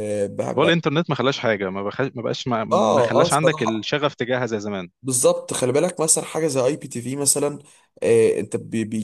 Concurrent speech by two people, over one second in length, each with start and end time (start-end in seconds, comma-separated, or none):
2.7-3.9